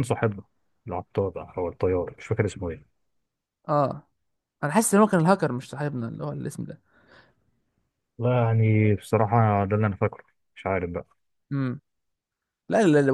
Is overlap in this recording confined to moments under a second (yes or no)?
yes